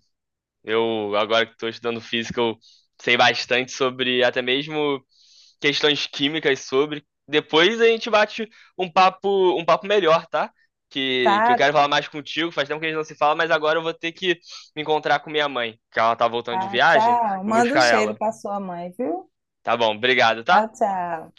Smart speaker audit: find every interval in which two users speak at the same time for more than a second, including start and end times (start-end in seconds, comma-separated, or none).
16.5-18.2